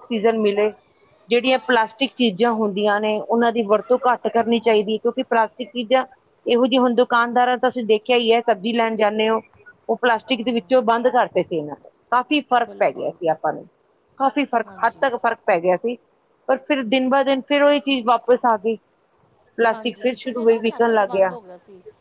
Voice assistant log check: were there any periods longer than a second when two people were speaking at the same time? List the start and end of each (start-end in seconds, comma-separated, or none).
19.7-21.1